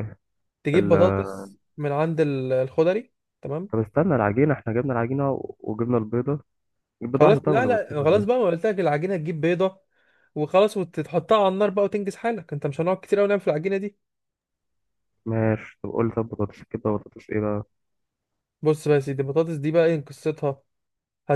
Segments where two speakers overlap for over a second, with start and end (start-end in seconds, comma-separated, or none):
7.2-8.4